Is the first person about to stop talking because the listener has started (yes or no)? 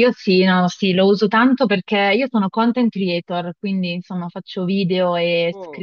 no